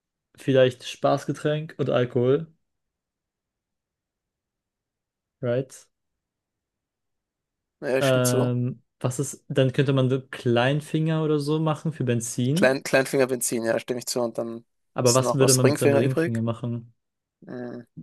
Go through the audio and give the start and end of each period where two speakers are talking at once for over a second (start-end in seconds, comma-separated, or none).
15.0-16.4